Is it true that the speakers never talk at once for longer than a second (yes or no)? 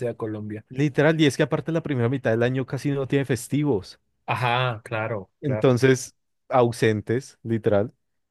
yes